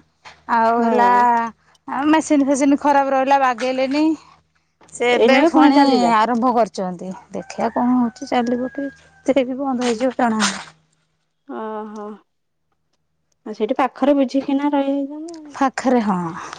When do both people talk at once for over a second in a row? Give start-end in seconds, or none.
none